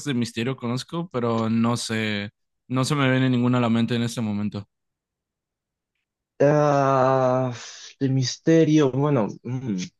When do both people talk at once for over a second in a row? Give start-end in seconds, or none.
none